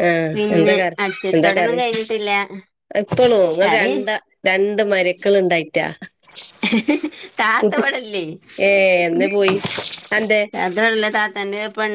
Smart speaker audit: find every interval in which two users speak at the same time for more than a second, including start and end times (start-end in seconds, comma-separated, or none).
none